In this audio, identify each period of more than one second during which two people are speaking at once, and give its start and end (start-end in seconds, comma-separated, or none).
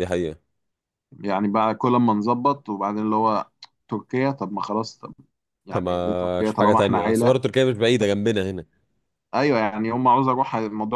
5.7-7.5